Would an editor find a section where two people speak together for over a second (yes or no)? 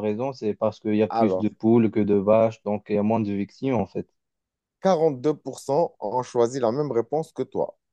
no